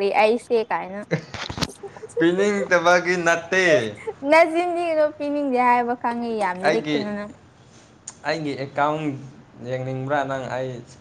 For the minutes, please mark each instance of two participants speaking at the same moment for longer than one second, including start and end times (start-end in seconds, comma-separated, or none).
none